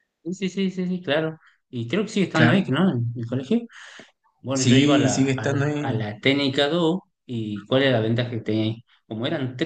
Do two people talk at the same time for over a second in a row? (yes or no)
yes